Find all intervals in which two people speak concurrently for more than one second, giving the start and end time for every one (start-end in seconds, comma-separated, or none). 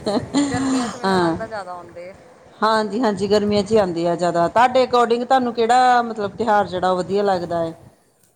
none